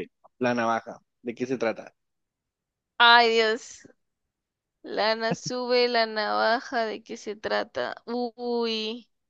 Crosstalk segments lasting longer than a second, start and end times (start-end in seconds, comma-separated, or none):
none